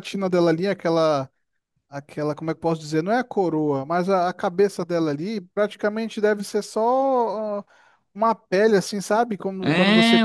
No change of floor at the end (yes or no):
no